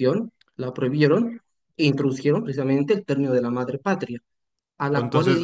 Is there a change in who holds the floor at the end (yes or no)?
yes